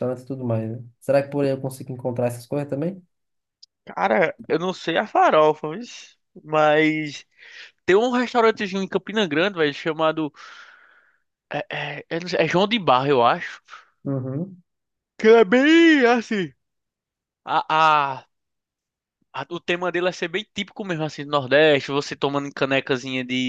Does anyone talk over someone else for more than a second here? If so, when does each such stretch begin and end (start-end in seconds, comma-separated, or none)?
none